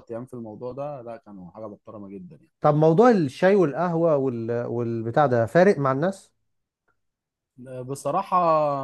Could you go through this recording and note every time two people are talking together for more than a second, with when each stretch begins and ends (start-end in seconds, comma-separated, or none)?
none